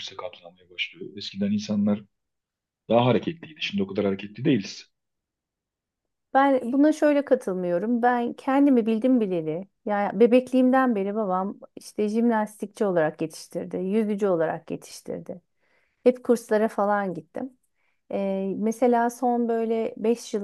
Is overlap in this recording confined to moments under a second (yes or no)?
yes